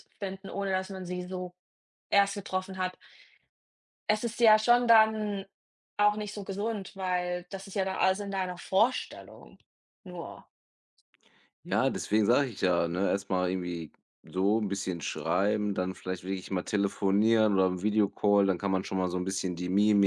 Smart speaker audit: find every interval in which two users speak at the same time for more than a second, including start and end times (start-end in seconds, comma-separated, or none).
none